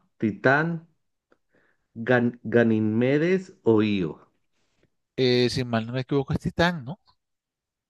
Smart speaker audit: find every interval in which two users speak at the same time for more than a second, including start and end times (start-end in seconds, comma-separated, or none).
none